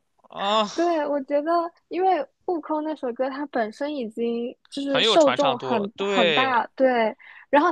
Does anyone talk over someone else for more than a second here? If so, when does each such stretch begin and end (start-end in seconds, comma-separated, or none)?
4.8-6.6